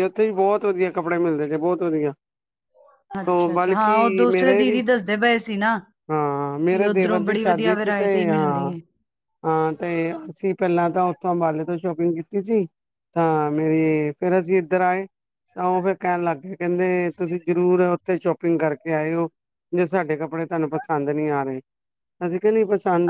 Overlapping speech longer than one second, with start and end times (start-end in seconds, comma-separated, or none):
3.3-4.8, 6.7-8.7